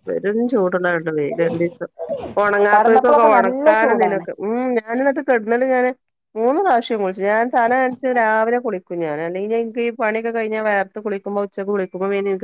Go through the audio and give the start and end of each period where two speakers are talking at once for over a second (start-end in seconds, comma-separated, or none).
2.7-4.2